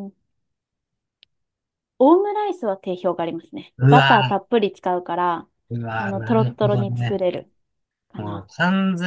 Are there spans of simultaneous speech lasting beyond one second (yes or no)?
yes